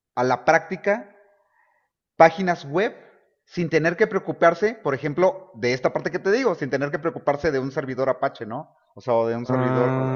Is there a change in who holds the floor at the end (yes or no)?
no